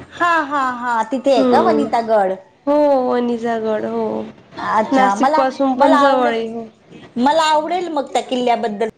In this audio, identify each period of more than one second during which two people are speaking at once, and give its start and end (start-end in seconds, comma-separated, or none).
4.9-6.6